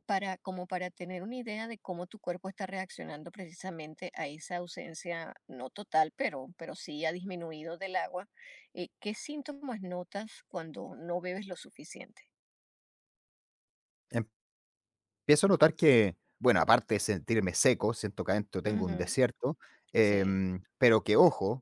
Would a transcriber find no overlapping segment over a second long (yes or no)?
yes